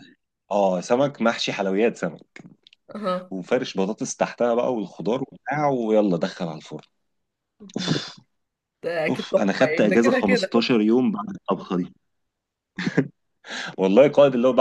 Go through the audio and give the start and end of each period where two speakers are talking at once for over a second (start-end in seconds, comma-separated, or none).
9.1-10.7